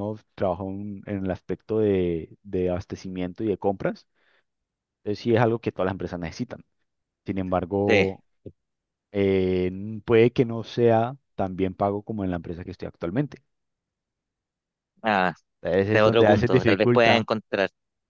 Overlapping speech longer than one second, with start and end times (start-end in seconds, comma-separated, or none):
15.8-17.3